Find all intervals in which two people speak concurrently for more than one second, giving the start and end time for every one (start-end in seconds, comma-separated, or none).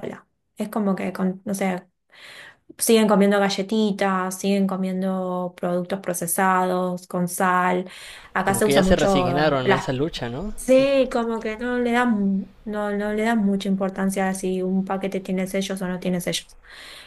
8.4-9.8